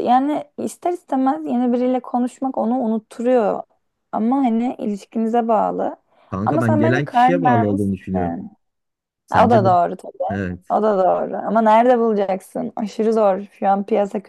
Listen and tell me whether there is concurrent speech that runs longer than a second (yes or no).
yes